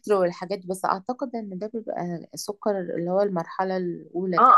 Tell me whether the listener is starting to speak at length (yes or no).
yes